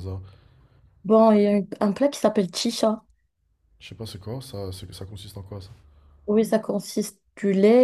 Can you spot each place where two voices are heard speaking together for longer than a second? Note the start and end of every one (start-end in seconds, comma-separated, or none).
none